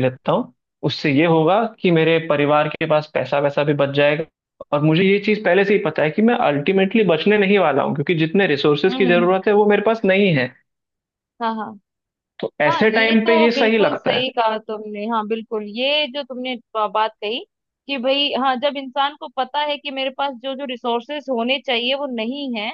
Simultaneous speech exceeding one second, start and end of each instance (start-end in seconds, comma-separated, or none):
12.7-14.2